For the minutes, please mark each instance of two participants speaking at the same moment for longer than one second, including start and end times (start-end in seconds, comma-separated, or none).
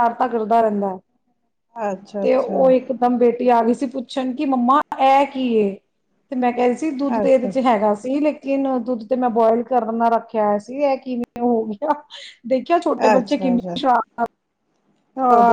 none